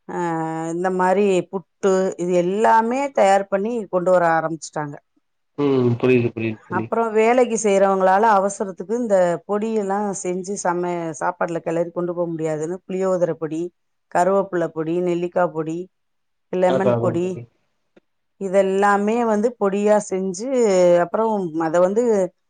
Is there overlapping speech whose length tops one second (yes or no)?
no